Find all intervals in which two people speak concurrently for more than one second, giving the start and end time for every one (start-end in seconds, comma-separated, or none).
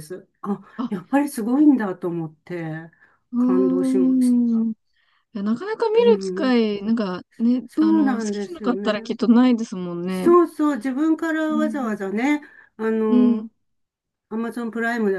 3.4-4.7, 7.7-9.1